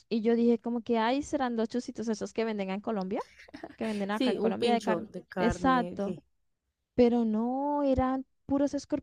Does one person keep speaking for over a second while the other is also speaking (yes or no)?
yes